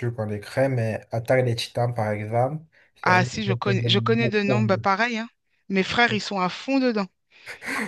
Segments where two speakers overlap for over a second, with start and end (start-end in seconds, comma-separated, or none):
3.0-4.9